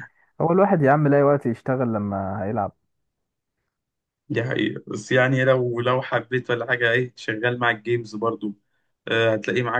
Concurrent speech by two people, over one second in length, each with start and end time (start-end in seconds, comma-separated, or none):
none